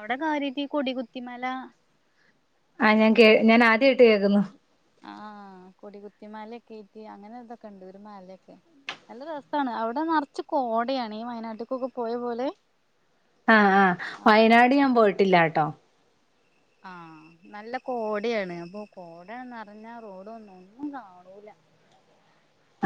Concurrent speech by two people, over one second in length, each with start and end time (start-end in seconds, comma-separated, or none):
none